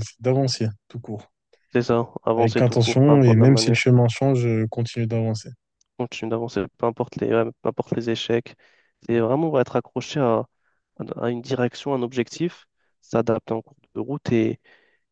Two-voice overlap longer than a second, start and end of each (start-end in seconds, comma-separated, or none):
2.4-3.8